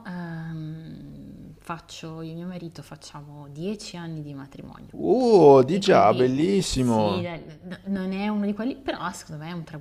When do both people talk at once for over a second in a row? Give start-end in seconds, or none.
5.7-7.3